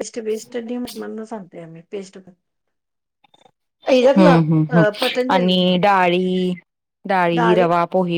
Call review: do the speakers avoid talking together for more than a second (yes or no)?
no